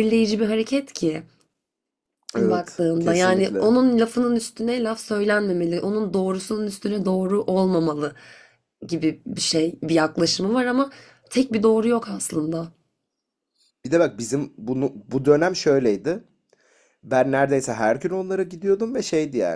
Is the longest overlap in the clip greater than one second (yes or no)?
yes